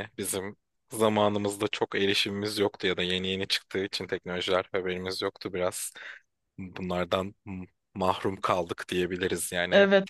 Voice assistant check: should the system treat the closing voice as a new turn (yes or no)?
no